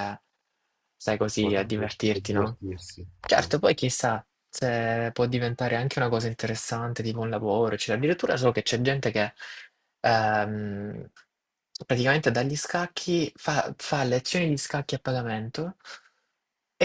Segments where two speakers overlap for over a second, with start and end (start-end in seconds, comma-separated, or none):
1.1-2.6